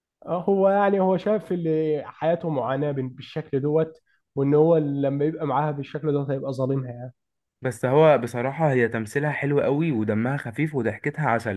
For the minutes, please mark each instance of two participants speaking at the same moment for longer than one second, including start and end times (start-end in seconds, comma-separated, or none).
none